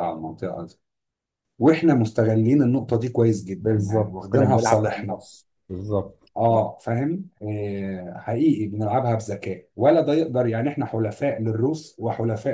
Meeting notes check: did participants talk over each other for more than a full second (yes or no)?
yes